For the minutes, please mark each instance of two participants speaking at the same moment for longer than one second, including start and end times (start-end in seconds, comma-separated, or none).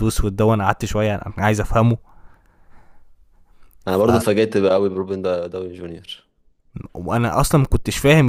none